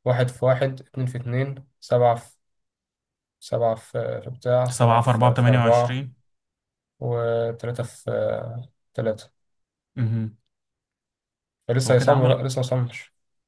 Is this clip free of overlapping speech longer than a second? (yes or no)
no